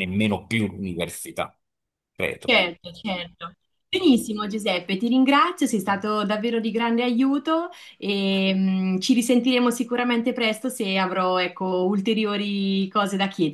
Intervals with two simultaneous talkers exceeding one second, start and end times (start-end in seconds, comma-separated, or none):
none